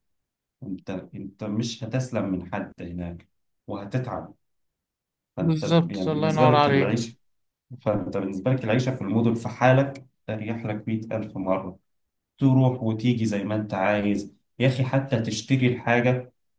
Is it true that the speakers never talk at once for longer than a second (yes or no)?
no